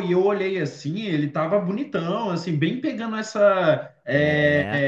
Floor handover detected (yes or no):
no